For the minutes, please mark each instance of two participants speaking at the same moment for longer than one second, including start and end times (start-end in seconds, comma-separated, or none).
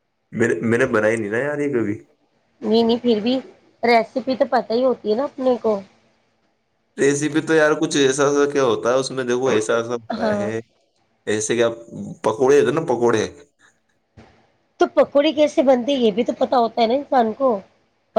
none